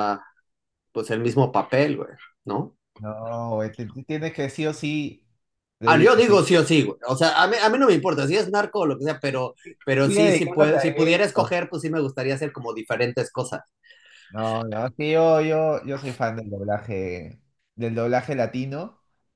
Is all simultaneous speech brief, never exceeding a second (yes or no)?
no